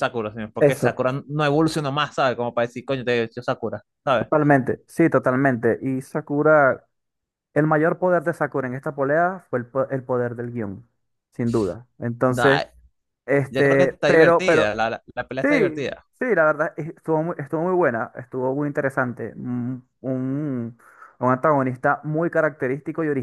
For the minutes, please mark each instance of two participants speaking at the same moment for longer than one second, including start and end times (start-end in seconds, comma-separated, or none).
13.5-14.7